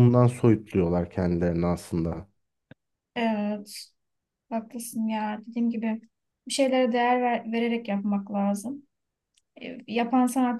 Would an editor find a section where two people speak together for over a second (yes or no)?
no